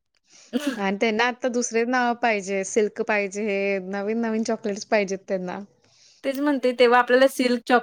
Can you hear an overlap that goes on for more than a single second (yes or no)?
no